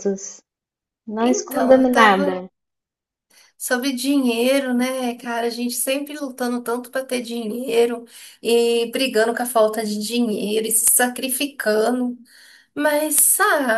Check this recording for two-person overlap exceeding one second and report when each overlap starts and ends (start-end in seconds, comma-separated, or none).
1.2-2.4